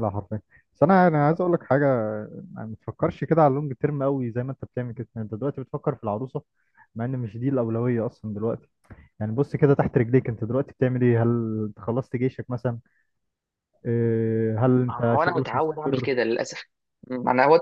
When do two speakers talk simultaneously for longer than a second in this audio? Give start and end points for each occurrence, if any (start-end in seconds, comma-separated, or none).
14.9-16.1